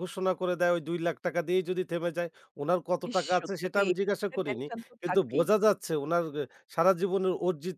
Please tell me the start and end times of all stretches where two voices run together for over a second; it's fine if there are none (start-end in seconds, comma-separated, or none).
3.1-5.5